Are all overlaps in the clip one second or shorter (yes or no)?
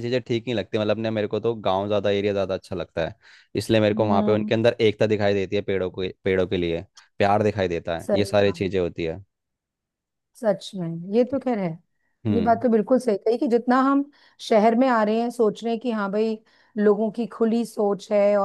yes